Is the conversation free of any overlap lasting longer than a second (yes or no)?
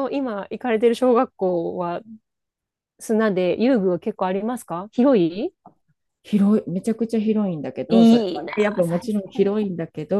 no